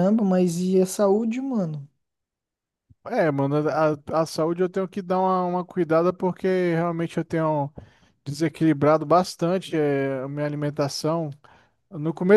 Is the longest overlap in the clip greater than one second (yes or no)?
no